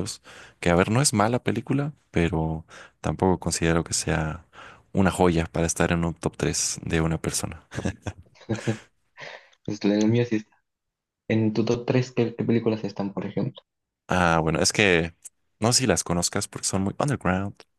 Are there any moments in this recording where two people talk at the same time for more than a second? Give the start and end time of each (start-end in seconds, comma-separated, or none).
none